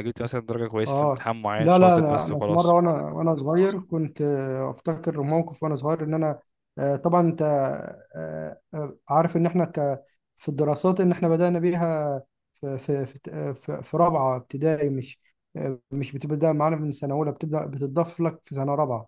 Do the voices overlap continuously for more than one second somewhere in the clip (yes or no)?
yes